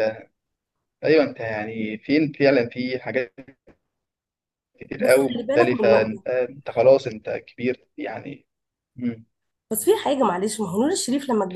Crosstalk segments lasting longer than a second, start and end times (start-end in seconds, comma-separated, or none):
5.0-6.2